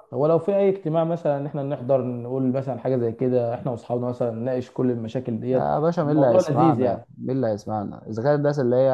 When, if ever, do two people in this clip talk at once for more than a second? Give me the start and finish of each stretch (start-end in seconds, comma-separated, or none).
5.5-7.1